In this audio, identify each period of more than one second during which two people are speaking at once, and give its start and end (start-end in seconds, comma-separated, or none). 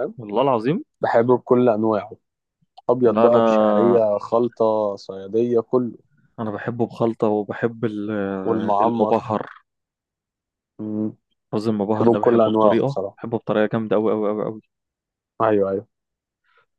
11.9-13.2